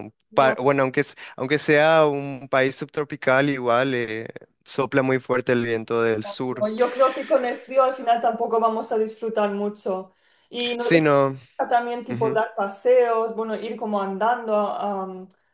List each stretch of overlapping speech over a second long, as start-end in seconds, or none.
none